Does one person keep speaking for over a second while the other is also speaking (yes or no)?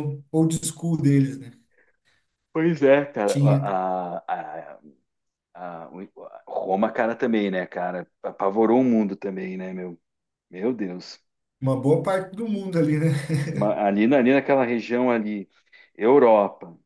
no